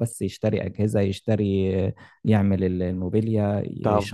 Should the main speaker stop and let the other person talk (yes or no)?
yes